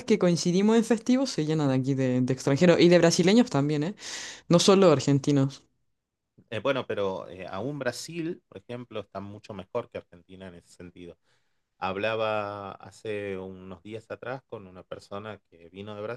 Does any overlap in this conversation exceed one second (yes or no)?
no